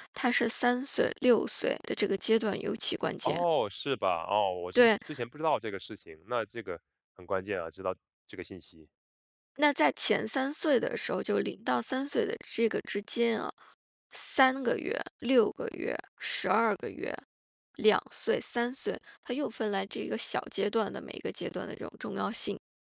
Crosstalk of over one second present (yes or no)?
no